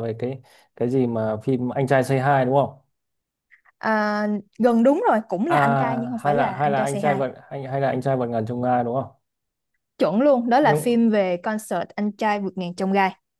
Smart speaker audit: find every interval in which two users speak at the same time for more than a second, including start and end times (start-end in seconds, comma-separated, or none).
5.5-7.2